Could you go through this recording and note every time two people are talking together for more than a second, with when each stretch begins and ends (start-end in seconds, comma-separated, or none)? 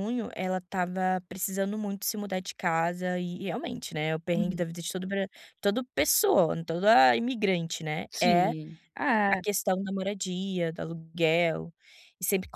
none